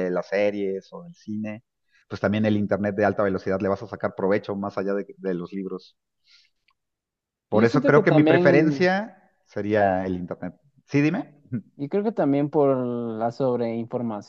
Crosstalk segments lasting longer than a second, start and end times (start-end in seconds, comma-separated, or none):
7.5-8.9